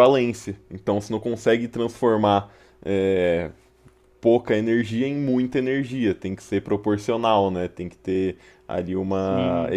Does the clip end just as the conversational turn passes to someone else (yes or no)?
no